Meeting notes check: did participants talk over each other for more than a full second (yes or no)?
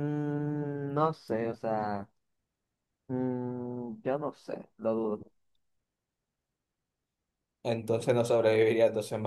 no